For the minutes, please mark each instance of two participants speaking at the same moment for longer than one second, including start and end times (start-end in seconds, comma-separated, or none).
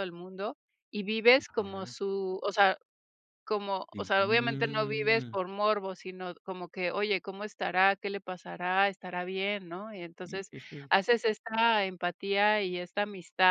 3.9-5.4